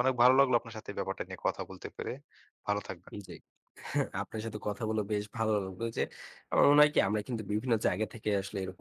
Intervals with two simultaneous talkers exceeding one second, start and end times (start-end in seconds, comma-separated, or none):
none